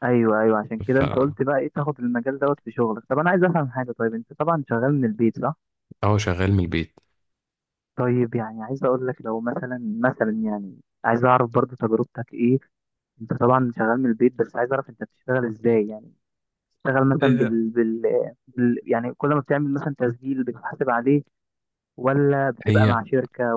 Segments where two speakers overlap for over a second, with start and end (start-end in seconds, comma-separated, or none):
none